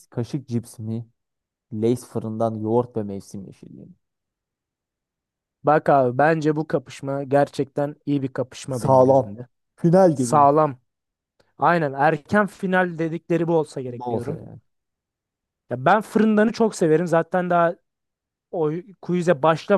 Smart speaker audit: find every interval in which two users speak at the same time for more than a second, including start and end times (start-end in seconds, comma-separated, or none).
none